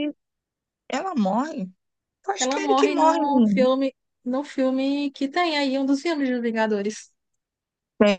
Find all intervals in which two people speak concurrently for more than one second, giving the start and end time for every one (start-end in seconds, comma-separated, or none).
2.4-3.7